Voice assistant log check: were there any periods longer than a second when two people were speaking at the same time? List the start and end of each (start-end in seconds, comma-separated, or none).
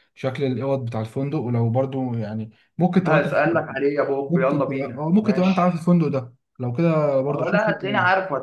4.3-5.8